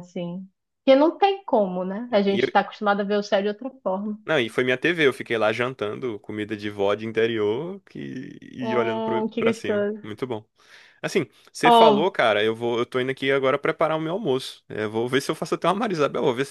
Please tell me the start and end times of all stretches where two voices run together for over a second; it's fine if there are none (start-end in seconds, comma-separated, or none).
8.6-10.0